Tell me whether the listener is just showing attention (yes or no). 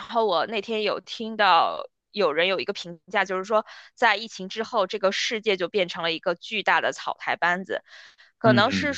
yes